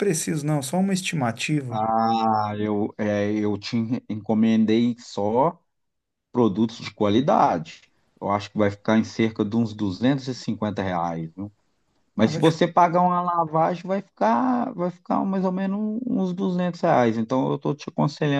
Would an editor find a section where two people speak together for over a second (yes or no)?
no